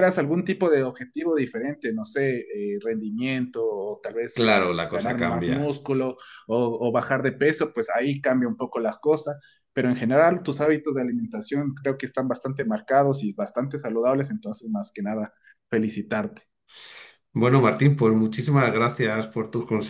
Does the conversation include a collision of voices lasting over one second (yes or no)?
yes